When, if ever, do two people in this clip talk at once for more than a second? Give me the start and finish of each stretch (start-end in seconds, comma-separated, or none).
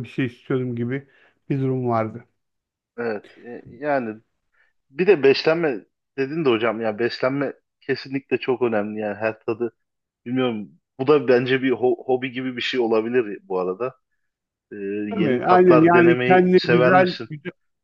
15.1-17.3